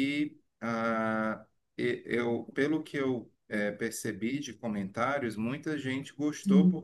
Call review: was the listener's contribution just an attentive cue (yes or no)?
yes